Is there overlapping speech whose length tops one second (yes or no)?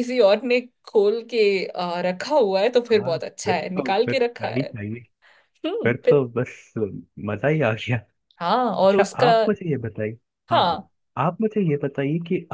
yes